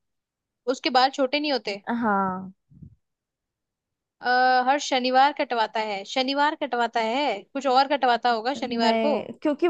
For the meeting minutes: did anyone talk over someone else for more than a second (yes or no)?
no